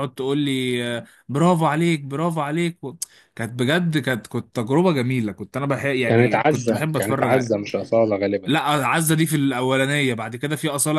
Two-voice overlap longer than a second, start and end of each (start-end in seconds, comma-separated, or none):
6.0-7.3